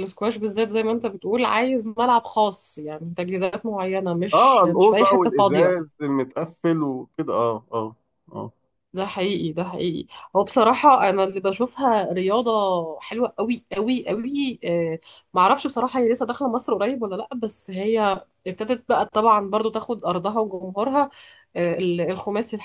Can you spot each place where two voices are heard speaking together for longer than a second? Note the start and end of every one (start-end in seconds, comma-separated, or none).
4.3-5.7